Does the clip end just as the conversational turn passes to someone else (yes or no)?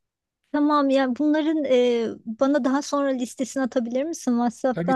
yes